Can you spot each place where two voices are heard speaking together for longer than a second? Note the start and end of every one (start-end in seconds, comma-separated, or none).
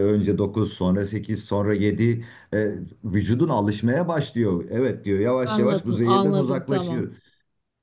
5.4-7.0